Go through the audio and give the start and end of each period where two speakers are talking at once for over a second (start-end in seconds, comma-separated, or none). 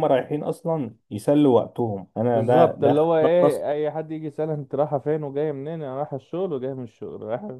2.3-3.7